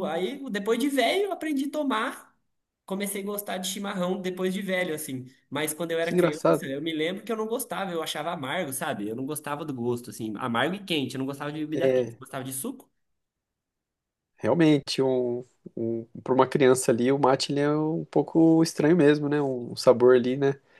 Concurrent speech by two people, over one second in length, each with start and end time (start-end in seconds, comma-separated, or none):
none